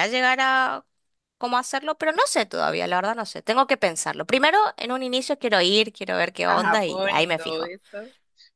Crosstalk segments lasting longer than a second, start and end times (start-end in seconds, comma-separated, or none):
6.5-7.7